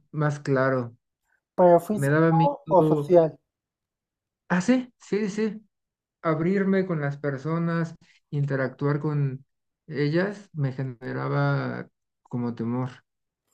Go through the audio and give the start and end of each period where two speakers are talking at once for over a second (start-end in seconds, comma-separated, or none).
1.9-3.1